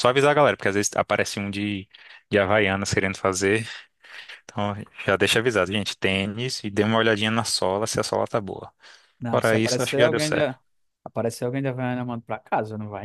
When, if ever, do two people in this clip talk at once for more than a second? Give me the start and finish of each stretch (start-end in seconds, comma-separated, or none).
9.3-10.6